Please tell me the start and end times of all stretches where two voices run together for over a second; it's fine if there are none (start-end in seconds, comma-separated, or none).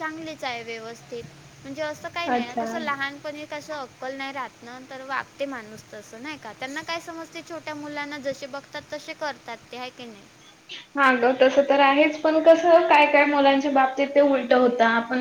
none